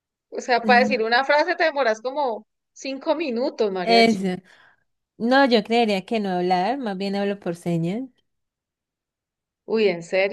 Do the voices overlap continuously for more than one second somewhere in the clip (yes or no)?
no